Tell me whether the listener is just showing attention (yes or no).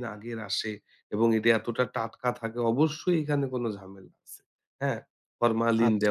no